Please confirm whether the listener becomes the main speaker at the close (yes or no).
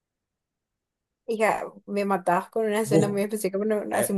yes